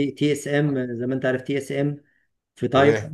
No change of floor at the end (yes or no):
yes